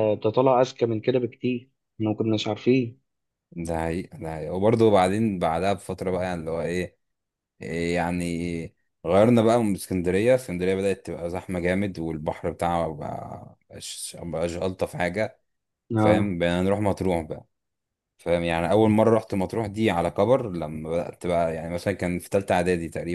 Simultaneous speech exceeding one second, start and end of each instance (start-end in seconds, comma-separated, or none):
none